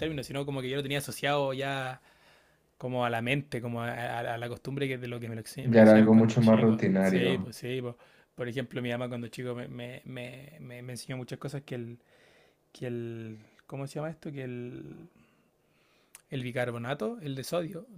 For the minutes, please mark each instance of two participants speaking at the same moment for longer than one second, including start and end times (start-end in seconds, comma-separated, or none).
5.6-7.5